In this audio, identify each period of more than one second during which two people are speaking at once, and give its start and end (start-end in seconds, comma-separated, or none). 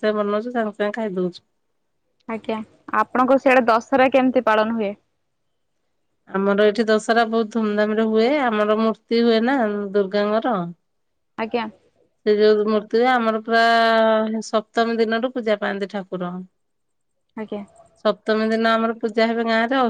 none